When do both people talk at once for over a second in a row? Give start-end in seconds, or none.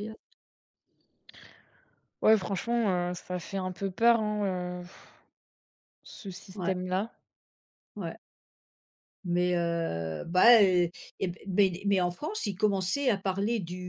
none